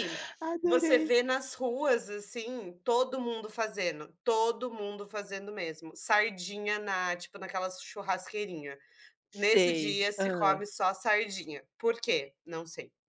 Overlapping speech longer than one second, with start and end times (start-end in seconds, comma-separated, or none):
9.3-10.6